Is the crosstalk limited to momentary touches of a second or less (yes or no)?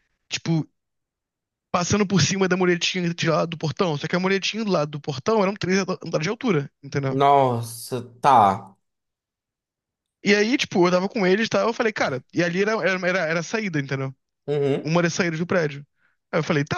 yes